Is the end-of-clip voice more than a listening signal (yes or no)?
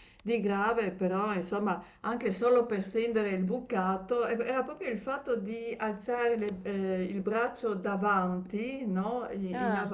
no